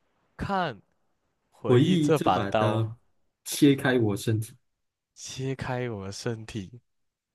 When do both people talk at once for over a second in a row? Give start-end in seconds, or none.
1.6-2.9